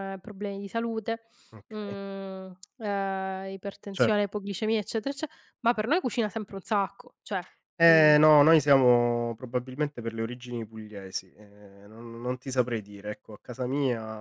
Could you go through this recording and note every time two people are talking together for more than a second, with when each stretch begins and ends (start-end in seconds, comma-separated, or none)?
none